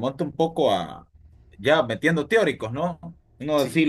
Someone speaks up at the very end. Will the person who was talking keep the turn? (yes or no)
yes